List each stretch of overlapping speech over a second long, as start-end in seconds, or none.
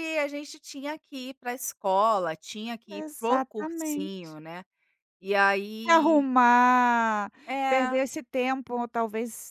3.0-4.3